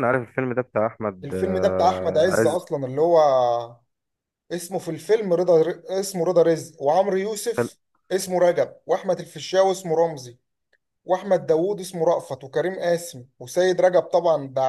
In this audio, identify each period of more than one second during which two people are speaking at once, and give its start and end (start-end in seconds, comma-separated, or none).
1.2-2.6